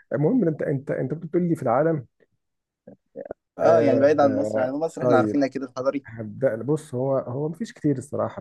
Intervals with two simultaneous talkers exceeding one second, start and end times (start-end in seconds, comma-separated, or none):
3.6-5.4